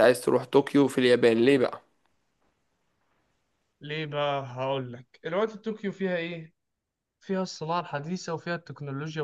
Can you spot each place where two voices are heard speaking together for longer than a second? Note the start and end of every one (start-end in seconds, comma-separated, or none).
none